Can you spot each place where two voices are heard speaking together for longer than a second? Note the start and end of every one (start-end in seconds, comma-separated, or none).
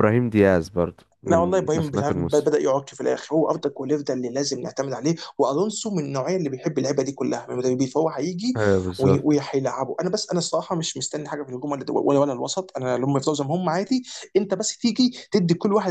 1.3-2.5